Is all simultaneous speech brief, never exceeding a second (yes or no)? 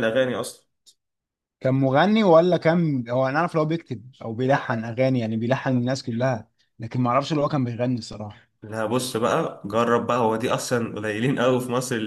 yes